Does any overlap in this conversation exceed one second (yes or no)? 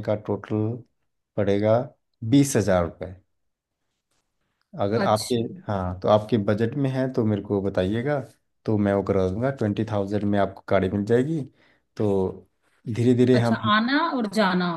no